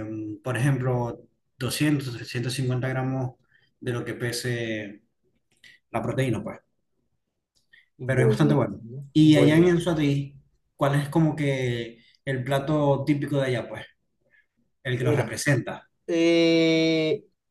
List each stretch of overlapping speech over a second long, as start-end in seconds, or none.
8.0-9.7